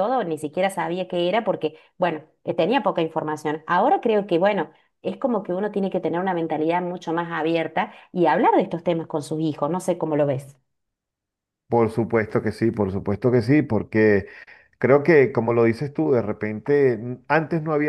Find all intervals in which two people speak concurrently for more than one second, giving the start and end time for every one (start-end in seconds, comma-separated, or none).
none